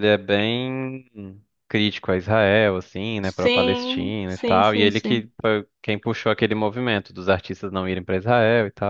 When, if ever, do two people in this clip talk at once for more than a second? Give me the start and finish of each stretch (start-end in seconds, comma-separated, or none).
3.2-5.3